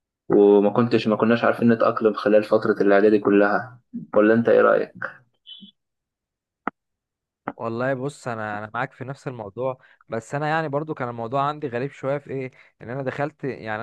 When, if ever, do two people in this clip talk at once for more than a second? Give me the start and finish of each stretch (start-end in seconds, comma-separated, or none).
none